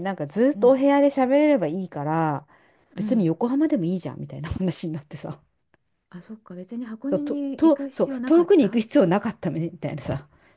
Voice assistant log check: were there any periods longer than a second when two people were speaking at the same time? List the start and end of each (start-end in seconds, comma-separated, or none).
7.1-8.8